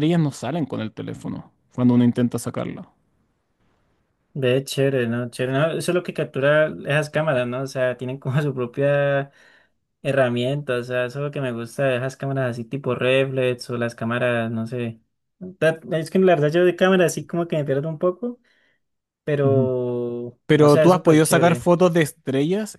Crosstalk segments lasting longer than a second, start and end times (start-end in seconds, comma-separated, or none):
20.4-21.7